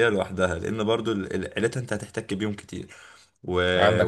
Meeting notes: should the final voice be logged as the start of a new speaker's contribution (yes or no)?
no